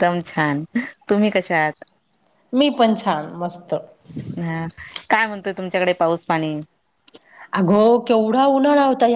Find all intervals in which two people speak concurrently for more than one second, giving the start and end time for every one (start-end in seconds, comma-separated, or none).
none